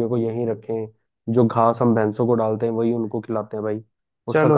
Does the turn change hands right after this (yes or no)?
yes